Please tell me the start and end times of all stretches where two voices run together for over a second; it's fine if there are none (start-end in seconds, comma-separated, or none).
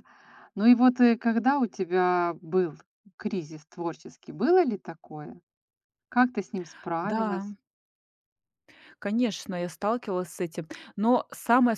none